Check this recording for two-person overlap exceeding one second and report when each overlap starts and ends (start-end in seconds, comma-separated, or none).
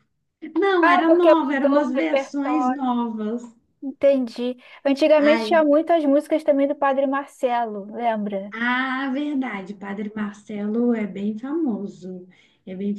0.8-3.0